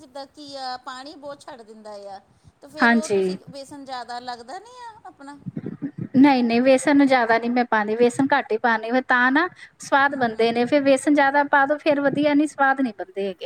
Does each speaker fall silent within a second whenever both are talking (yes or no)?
yes